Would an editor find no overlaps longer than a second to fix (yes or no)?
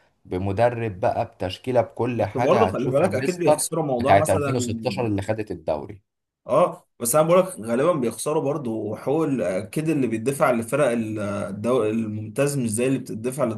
no